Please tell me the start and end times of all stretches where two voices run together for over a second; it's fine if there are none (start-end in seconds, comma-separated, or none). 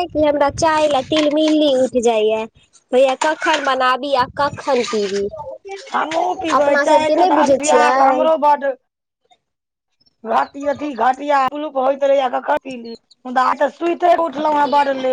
6.6-8.2